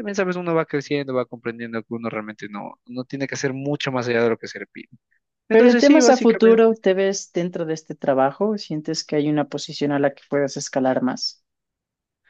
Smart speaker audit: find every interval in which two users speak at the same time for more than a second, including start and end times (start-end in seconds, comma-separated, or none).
5.5-6.8